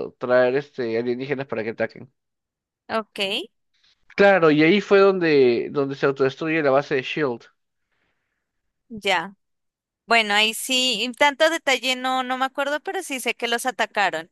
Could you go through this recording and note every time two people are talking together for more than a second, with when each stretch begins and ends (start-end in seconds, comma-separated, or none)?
none